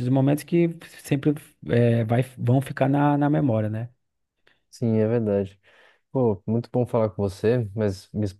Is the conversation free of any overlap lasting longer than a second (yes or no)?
yes